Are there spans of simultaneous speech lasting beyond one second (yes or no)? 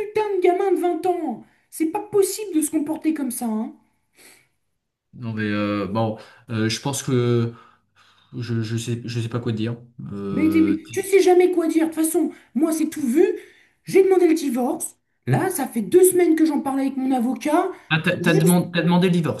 no